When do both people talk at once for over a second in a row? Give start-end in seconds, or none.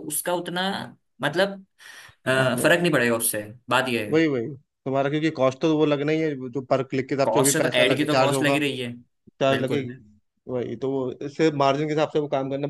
7.2-8.6